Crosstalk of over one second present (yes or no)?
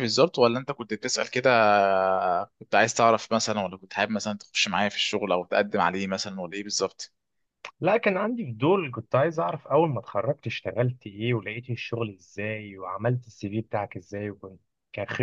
no